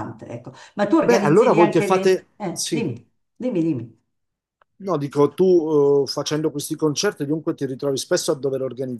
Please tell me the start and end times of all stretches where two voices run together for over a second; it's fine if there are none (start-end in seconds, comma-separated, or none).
1.0-2.9